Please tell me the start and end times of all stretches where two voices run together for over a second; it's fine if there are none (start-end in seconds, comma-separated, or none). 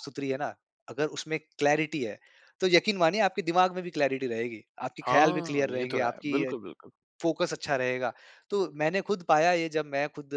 5.0-6.5